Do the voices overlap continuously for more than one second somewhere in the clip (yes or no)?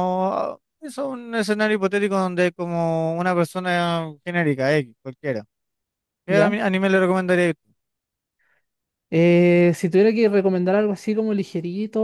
no